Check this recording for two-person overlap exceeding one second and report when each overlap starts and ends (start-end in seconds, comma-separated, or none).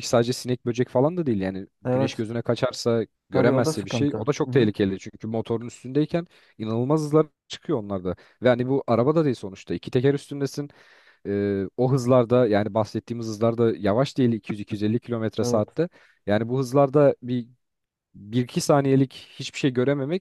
3.3-4.7